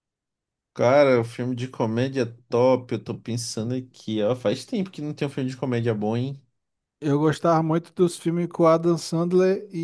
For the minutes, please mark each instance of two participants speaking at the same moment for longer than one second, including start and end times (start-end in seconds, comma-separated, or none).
none